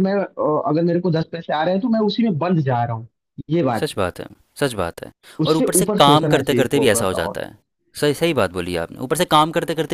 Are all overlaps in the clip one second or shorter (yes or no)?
no